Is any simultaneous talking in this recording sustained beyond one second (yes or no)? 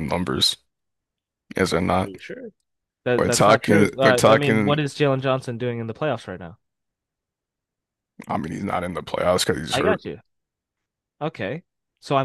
yes